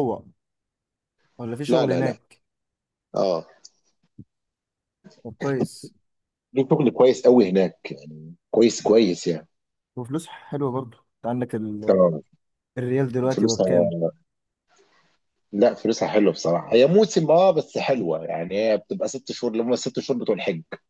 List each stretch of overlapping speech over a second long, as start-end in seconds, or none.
none